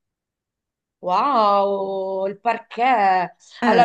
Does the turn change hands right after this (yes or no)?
no